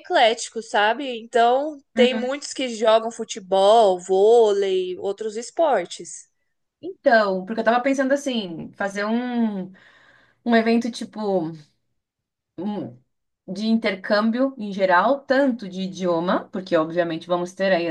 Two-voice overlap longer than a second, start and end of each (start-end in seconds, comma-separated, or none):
none